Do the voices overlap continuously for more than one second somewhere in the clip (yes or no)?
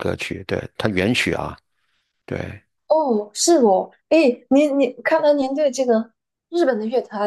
no